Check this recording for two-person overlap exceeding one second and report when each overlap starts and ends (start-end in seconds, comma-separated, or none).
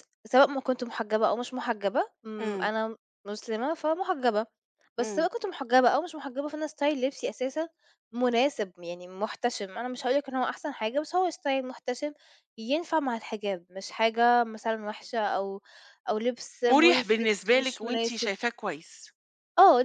16.7-18.3